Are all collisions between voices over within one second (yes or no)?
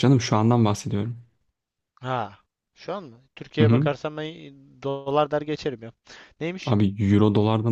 yes